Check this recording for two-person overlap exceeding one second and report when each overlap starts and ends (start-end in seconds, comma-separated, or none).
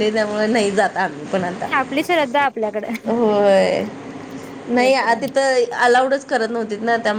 none